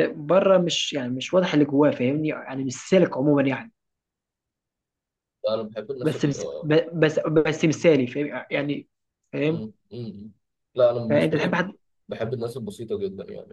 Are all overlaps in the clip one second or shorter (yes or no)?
yes